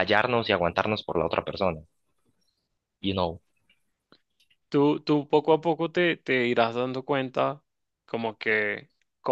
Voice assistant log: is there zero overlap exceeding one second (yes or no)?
yes